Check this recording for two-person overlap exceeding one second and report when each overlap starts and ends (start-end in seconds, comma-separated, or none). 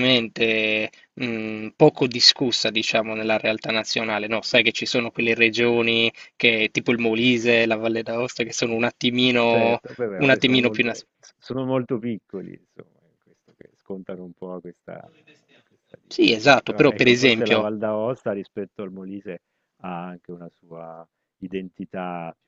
9.5-11.1, 16.1-17.7